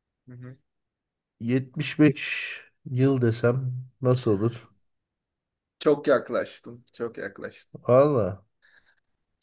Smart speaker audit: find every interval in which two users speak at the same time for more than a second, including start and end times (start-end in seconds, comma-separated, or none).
none